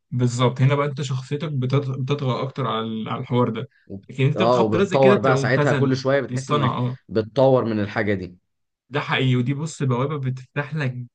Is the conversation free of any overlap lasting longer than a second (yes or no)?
no